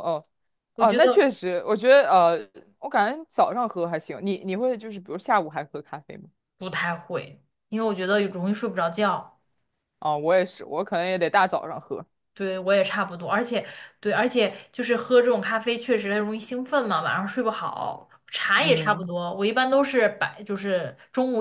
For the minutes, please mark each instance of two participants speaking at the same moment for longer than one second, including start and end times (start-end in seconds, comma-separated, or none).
none